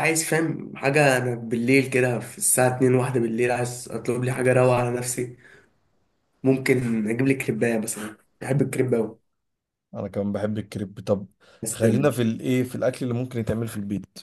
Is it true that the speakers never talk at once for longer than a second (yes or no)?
yes